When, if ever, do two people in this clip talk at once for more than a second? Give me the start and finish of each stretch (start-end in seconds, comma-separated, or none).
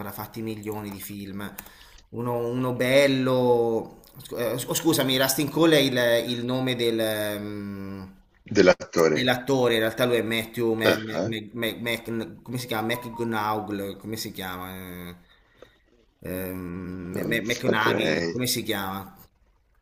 17.1-18.3